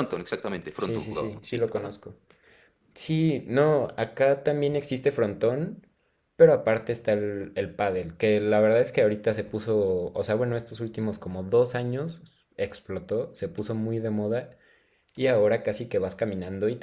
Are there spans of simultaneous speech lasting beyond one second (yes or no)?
yes